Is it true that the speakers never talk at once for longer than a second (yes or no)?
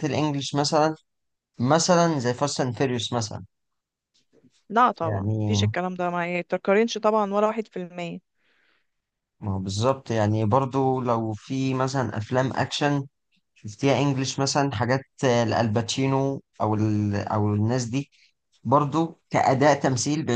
yes